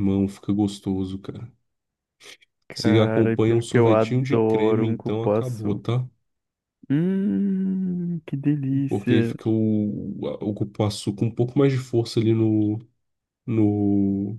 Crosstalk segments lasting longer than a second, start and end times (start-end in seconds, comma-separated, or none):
2.7-5.8